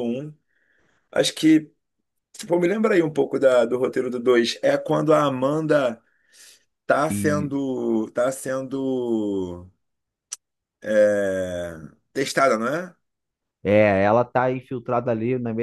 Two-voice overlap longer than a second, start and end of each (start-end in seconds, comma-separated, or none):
none